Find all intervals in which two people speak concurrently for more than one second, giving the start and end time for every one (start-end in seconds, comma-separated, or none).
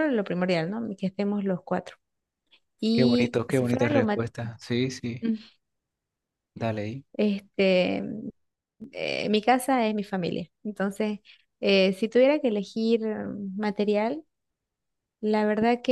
2.9-4.3